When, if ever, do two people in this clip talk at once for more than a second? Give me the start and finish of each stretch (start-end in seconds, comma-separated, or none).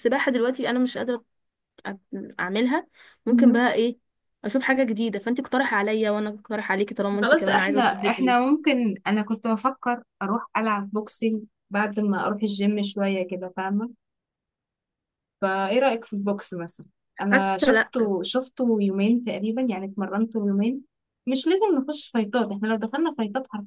7.2-8.5